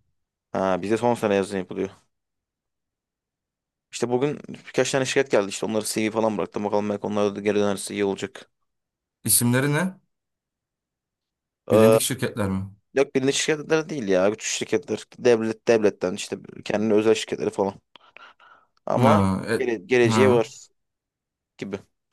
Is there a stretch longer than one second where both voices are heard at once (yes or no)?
no